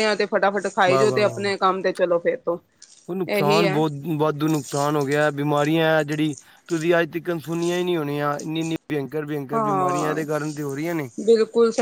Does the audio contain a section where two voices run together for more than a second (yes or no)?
no